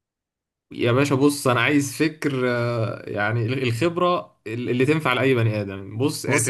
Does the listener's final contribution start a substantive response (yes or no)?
no